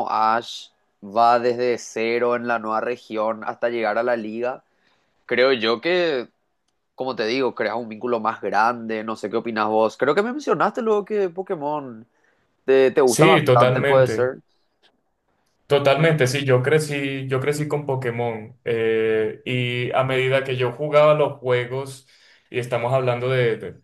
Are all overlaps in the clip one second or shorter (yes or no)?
no